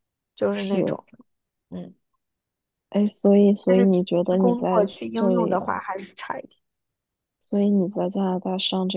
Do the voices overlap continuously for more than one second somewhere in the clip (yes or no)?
yes